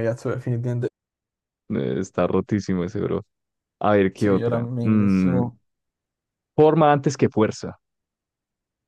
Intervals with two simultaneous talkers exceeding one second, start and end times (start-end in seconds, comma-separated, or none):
4.1-5.4